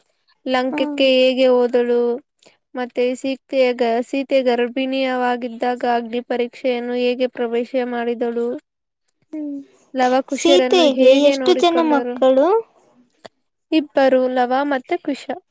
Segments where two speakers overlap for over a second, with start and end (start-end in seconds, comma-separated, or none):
10.4-12.2